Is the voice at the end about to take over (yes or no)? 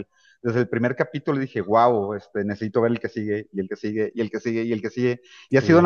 no